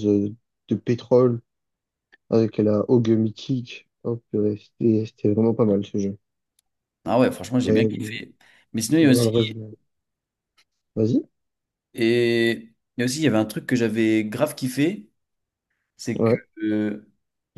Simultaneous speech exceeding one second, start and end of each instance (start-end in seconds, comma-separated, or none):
none